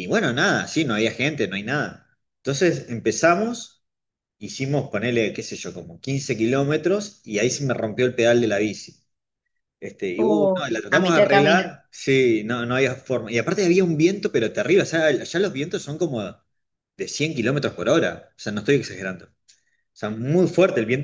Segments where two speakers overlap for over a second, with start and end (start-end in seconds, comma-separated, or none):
10.2-11.7